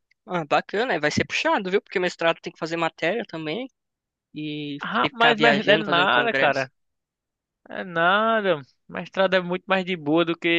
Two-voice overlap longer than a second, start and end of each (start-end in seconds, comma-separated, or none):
4.8-6.7